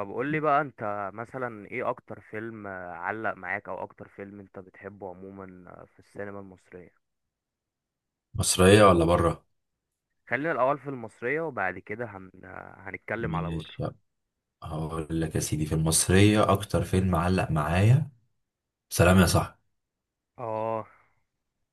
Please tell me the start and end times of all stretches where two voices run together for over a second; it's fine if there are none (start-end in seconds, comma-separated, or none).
none